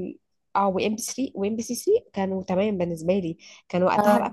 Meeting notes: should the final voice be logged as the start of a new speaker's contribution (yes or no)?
no